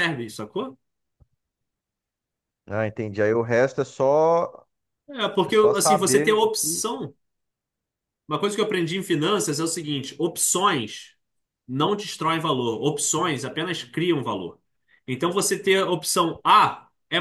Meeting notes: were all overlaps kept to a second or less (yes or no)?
no